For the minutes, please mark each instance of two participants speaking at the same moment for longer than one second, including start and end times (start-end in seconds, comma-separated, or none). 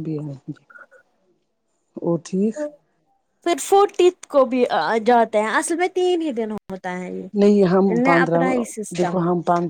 none